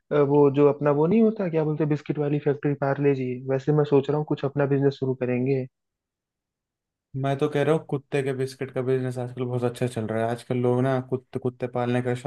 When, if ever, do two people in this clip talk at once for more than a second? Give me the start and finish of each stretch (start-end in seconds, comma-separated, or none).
none